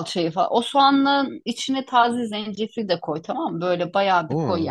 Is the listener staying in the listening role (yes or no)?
yes